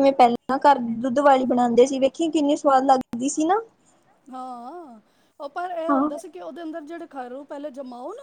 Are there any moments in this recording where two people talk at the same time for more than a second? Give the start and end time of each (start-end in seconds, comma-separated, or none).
none